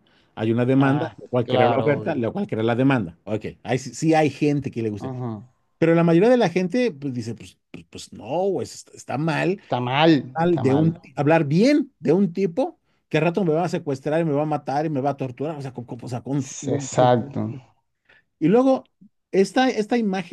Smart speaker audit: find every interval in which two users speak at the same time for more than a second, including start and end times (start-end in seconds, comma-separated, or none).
0.8-2.3